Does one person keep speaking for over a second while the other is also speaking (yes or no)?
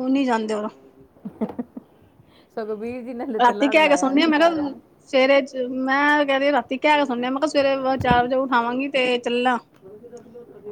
yes